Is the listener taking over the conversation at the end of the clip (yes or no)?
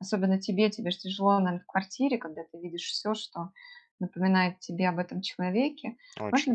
no